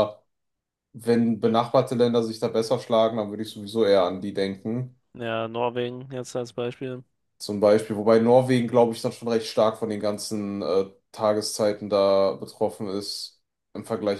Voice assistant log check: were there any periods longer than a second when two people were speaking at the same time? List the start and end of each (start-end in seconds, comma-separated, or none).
none